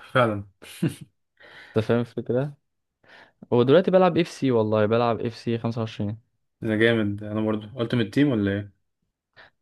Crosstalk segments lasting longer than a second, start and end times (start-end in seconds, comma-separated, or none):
none